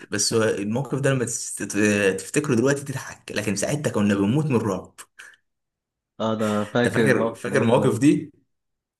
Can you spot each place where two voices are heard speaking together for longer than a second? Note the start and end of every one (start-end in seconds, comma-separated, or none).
6.8-8.0